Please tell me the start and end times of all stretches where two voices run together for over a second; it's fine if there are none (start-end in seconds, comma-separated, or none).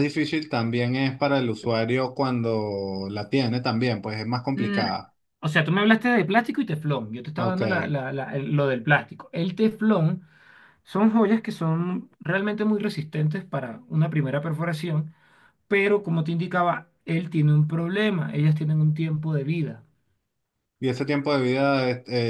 none